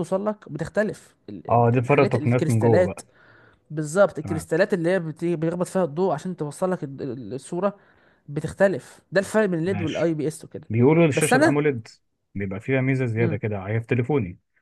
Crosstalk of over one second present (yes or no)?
yes